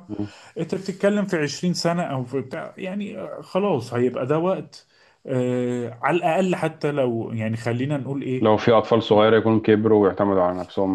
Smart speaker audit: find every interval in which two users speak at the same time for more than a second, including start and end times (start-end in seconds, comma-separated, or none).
none